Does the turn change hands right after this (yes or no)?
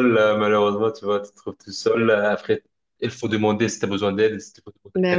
no